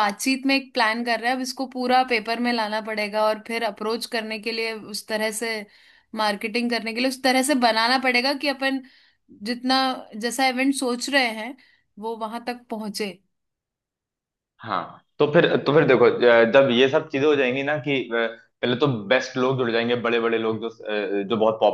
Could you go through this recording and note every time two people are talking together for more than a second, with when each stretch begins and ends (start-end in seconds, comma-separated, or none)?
none